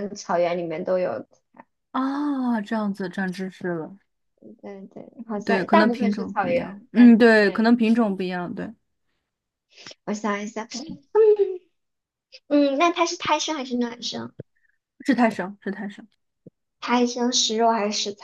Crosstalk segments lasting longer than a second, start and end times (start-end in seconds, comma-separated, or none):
5.4-8.1